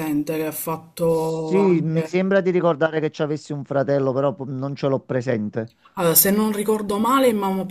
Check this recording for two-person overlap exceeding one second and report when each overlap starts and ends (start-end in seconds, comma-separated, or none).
1.0-2.2